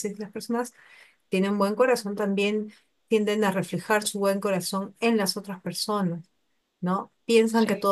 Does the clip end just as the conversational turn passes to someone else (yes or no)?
no